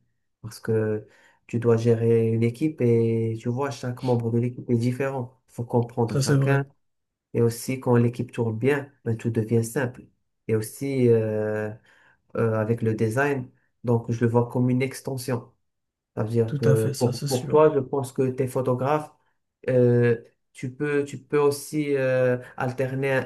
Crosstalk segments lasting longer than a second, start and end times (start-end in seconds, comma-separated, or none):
16.5-17.8